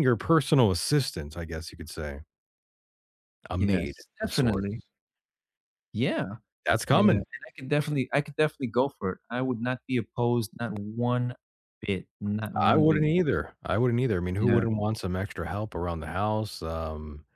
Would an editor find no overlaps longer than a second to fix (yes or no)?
no